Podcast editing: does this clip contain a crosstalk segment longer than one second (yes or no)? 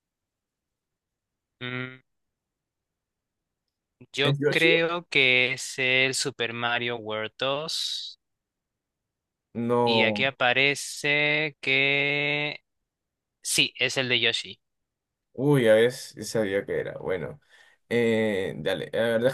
no